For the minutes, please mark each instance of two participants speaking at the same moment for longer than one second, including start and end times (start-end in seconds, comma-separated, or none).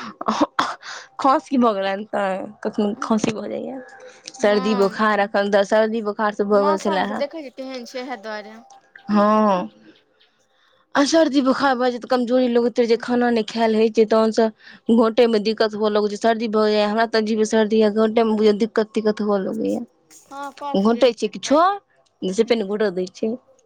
20.3-21.6